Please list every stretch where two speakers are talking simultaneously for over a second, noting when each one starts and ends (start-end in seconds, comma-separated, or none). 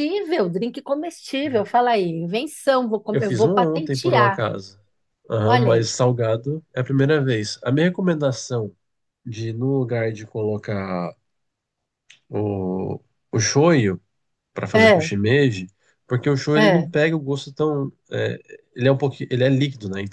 3.1-4.5